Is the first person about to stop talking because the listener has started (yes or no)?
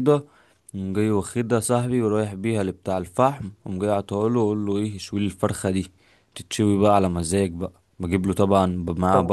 no